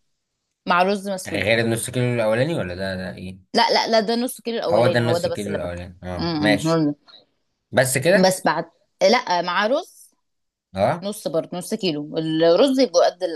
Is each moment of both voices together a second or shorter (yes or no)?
no